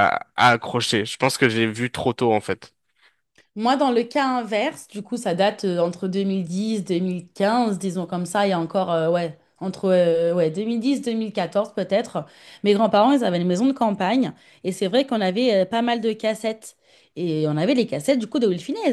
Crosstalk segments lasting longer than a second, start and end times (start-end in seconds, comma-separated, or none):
none